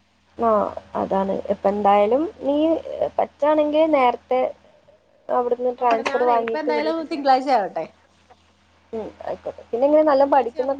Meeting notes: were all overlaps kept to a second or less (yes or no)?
no